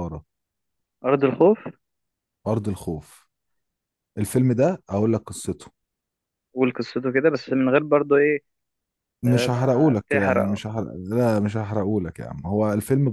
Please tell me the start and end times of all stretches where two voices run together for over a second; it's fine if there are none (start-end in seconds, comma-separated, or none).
9.3-10.6